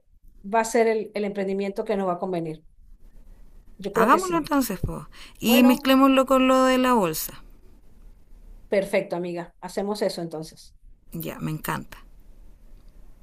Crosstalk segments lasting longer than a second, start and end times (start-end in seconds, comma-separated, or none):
none